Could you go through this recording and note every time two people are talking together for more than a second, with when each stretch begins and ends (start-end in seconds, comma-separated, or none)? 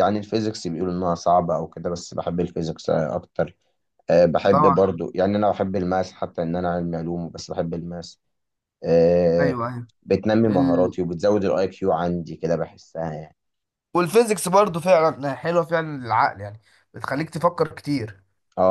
none